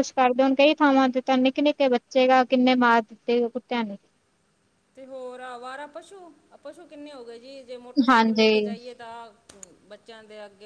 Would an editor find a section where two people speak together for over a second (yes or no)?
no